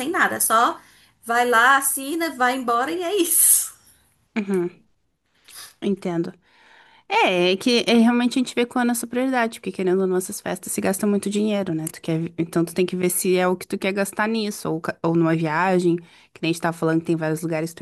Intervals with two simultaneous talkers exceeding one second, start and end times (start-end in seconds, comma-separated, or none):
none